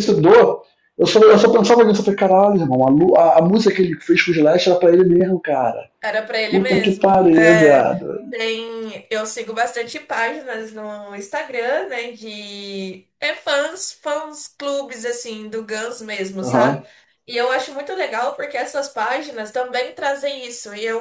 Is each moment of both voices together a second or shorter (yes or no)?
no